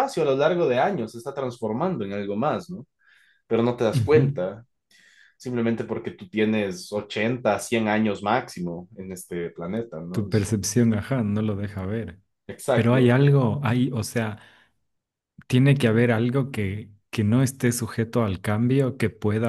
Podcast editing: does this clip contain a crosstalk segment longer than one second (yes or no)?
no